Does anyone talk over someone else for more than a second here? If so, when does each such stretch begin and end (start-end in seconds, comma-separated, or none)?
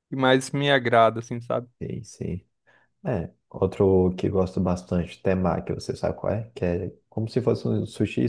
none